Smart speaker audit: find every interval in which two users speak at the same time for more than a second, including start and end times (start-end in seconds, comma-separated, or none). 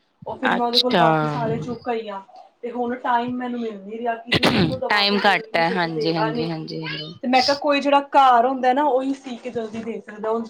4.9-6.5